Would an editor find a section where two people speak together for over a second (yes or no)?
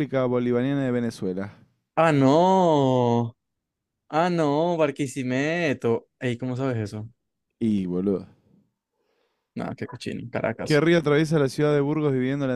no